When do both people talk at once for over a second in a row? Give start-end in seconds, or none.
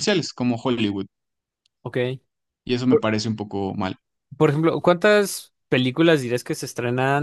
none